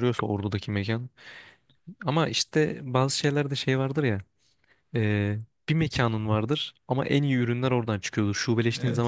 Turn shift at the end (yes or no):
no